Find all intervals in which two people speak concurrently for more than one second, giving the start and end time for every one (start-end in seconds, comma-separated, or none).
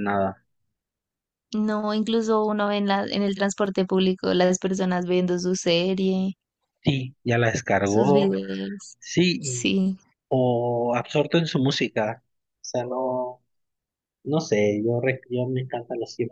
none